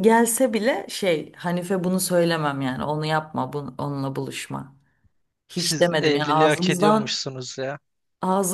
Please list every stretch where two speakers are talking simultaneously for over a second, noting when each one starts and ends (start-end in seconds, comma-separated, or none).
5.5-7.2